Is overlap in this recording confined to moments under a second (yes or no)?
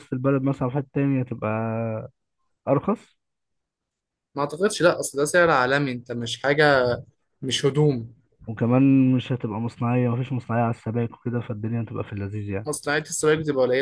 yes